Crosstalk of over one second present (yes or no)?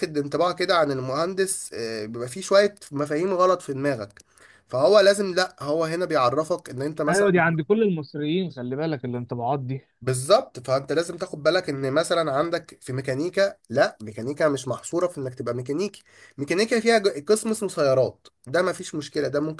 no